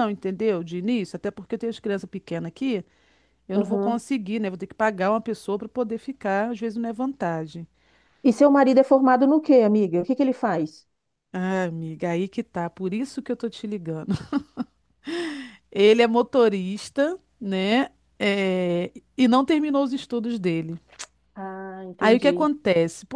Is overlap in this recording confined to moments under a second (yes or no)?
yes